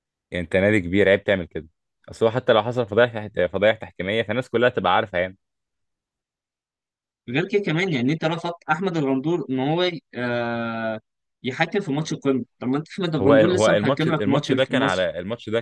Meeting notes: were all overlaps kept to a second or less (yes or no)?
no